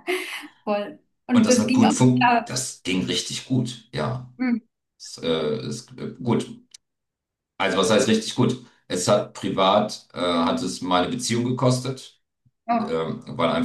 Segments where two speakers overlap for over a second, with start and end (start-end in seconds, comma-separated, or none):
1.3-2.6